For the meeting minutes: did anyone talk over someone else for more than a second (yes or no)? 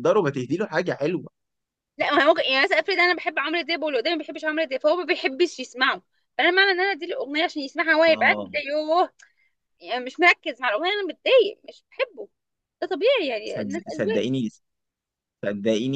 no